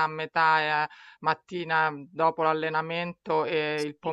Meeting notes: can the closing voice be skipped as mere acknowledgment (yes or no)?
no